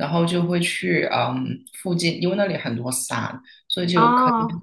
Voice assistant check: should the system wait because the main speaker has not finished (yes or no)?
yes